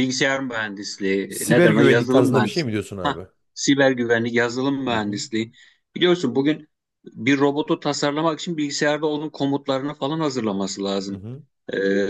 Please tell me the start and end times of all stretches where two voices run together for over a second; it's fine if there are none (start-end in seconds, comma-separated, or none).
1.3-3.3